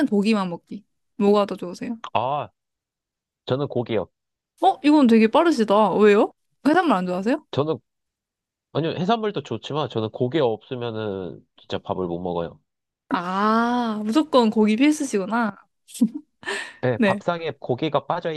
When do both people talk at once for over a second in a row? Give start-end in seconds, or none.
none